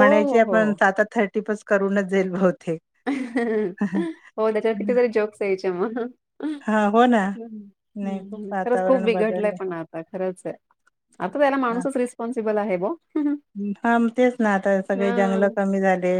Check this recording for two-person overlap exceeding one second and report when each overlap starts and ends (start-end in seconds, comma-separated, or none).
8.0-9.5